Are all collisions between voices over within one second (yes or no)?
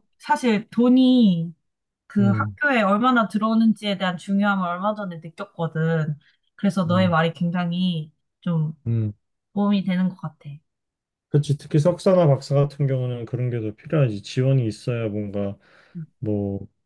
yes